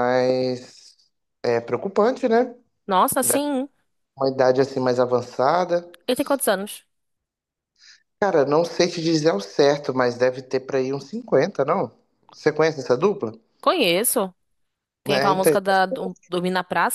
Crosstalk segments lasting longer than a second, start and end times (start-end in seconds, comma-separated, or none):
none